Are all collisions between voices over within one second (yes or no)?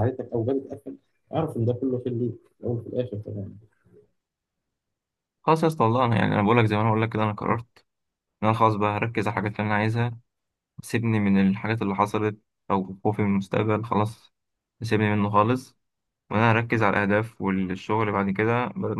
yes